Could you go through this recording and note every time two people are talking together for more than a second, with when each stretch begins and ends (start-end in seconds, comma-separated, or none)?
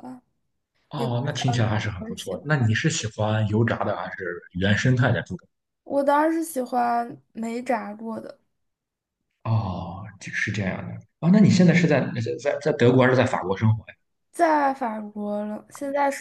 0.9-2.7